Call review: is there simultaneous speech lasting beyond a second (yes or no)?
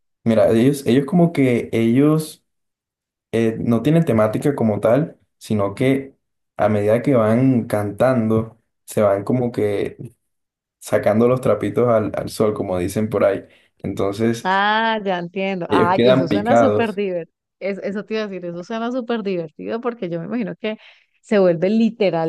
yes